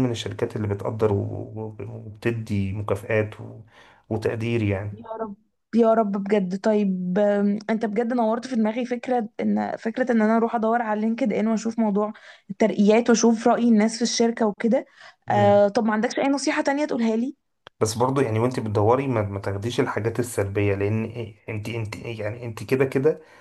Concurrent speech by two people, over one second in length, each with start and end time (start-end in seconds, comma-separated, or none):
none